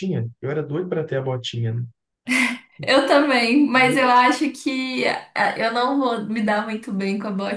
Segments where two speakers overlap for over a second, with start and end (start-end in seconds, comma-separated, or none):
none